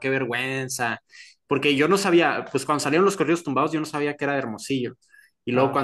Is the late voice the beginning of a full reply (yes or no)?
no